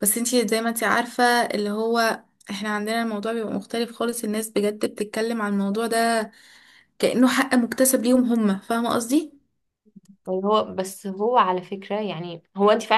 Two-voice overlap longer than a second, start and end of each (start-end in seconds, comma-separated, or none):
none